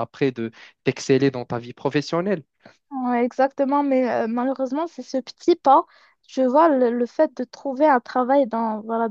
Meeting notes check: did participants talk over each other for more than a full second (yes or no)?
no